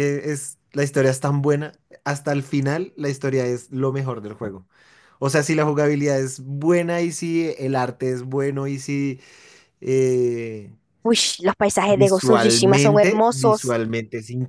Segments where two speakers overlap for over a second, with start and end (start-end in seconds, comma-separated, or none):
11.9-13.8